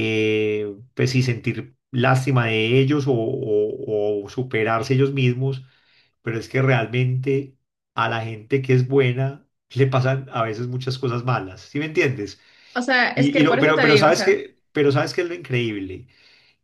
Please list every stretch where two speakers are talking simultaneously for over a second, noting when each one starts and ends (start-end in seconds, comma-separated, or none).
13.1-14.4